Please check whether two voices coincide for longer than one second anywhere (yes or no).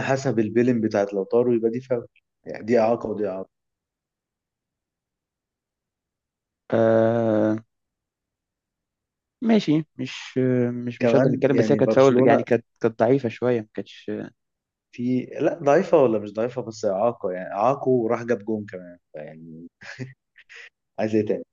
yes